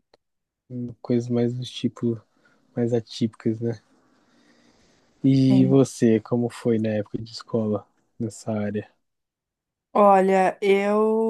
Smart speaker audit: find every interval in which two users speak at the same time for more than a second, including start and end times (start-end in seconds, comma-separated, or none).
none